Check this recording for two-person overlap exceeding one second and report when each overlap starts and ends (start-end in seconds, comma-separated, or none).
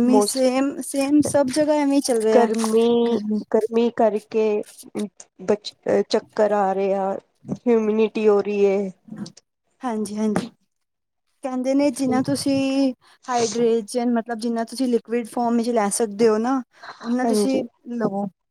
none